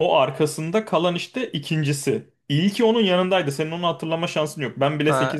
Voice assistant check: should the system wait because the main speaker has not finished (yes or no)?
no